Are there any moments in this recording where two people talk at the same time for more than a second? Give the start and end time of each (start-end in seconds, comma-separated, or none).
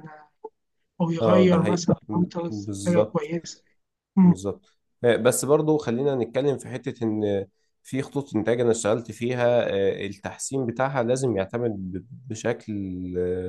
1.2-3.3